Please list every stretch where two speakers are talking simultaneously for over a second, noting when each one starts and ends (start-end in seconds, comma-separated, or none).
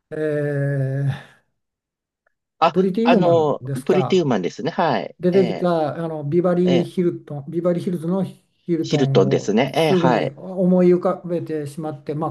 2.7-4.3, 8.8-10.3